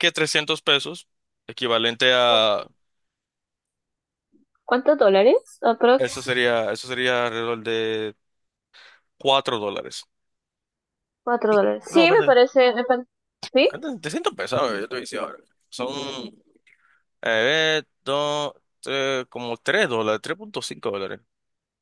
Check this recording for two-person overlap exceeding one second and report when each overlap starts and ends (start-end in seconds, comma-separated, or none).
none